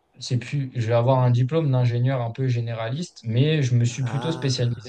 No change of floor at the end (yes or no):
yes